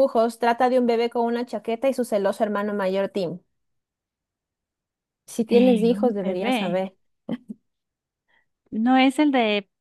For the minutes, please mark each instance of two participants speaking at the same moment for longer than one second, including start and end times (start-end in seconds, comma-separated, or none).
5.5-6.8